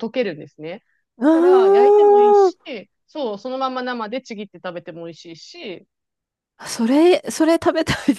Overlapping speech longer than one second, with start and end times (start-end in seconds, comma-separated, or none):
1.2-2.5